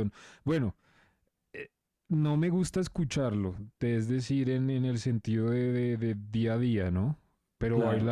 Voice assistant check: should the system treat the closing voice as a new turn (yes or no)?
no